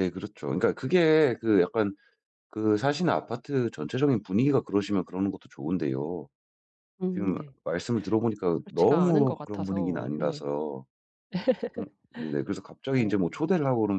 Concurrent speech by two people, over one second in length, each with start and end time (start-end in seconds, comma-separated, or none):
8.6-10.4